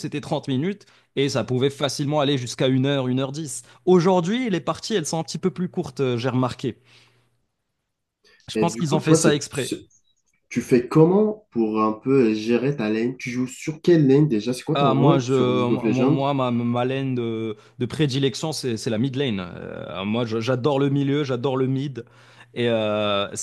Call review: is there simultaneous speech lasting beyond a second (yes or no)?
yes